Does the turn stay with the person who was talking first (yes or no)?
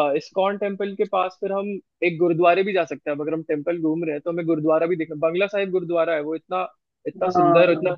yes